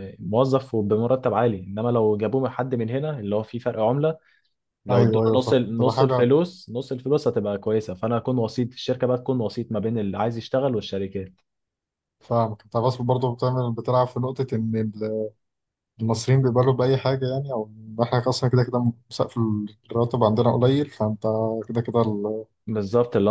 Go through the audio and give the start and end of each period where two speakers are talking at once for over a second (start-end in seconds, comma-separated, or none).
4.9-6.3